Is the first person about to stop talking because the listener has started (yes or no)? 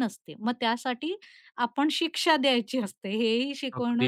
yes